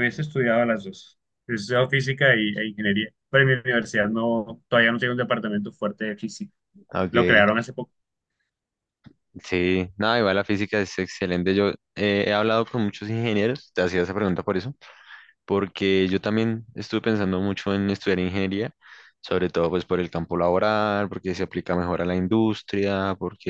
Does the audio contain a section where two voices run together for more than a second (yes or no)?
no